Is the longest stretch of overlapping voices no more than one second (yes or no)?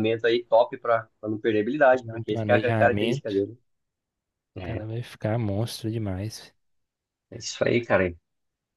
no